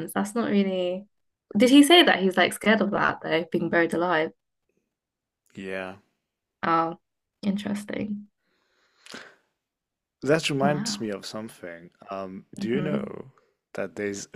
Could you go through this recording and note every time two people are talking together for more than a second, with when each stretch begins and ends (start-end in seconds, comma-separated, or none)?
none